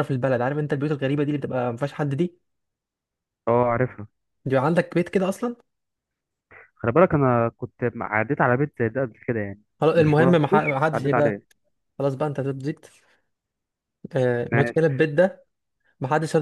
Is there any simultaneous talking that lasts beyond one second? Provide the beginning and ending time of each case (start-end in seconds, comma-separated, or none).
9.8-11.3